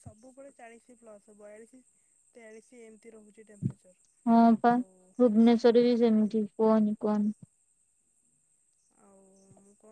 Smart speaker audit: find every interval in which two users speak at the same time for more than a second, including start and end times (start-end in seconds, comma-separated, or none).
none